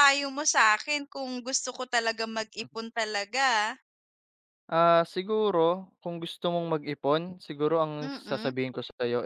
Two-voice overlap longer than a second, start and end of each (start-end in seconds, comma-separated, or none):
none